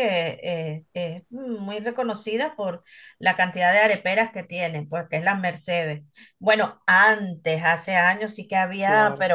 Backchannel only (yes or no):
yes